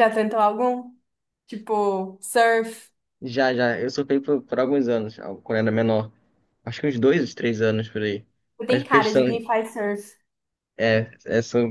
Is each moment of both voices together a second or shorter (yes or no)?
yes